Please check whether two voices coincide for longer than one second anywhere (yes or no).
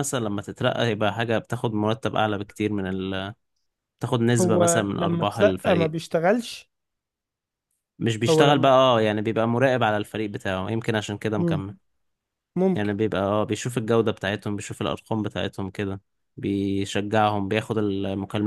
yes